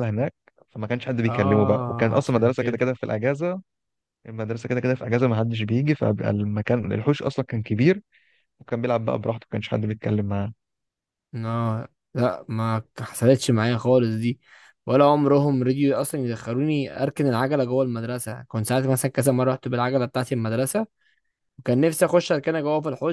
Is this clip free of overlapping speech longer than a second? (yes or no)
no